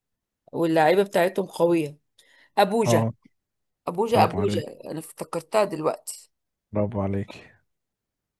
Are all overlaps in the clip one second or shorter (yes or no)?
yes